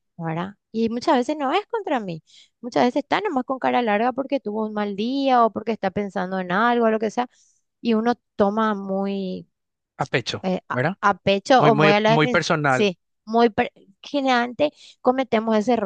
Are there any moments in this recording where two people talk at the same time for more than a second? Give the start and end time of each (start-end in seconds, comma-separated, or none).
11.6-12.9